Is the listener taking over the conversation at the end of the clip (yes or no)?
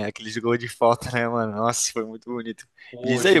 no